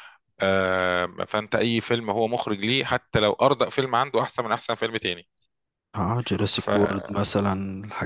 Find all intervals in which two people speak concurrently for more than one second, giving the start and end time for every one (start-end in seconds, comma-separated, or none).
none